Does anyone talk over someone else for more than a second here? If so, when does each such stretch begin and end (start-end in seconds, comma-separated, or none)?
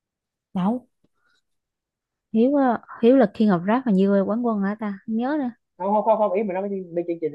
none